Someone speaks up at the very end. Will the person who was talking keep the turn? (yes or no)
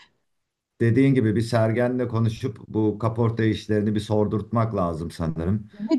no